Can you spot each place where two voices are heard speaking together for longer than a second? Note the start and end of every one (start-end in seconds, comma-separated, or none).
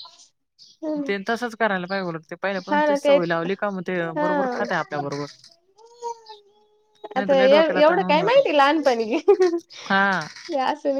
7.2-8.4